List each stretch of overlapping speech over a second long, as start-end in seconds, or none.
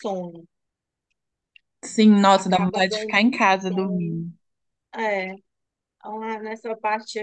2.3-4.3